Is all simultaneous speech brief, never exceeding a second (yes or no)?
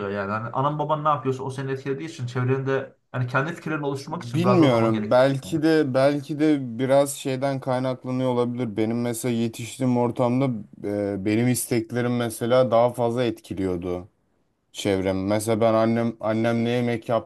no